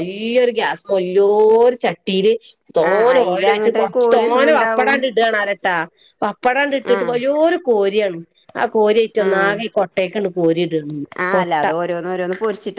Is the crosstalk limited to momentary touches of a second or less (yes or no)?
no